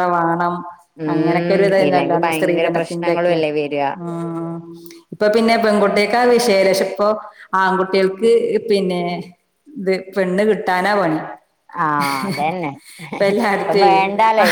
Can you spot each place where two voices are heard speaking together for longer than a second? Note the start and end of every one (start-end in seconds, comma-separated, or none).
1.1-3.4